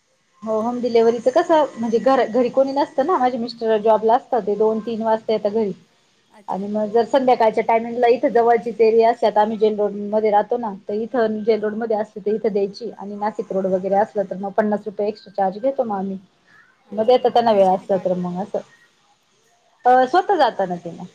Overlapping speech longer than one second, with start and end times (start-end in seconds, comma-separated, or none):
17.0-18.4